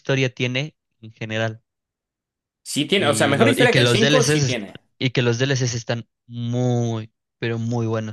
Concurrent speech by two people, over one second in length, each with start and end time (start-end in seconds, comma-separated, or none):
3.0-4.6